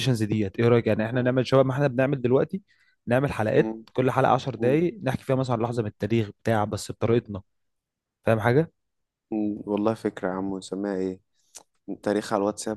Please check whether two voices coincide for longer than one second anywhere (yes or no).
no